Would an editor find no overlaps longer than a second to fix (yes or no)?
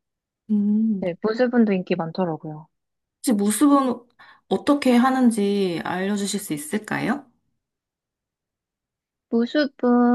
yes